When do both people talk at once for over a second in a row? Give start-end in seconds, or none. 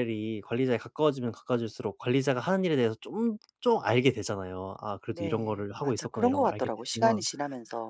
5.1-7.2